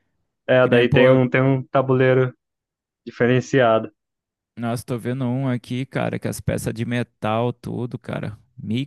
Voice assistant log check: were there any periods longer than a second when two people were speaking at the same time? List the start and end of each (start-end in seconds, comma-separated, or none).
none